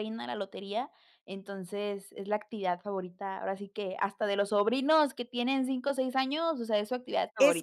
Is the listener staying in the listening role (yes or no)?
no